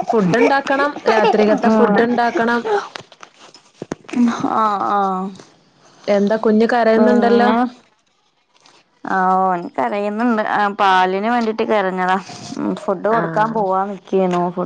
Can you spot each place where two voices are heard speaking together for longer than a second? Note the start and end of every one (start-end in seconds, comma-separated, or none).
none